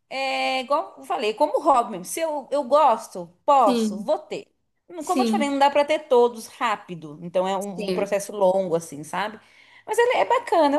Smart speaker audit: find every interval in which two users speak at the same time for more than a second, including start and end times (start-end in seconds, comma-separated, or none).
none